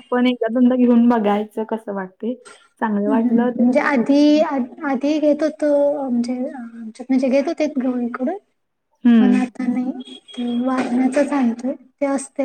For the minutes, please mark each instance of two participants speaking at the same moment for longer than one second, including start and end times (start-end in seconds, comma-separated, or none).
none